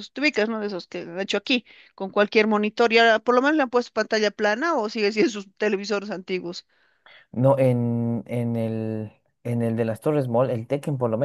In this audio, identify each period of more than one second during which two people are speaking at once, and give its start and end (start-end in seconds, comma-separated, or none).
none